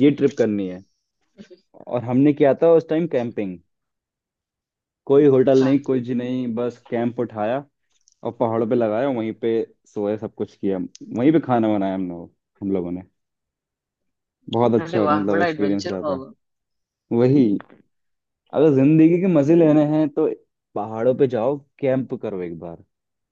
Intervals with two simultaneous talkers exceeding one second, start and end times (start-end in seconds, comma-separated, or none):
14.8-16.2